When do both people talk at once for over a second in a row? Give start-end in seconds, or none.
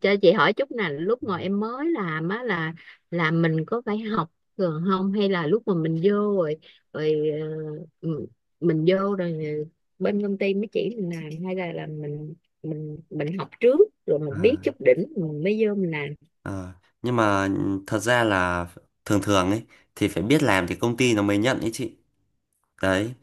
none